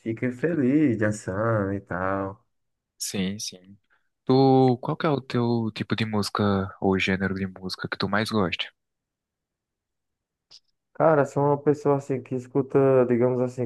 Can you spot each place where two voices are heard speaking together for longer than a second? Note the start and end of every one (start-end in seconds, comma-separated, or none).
none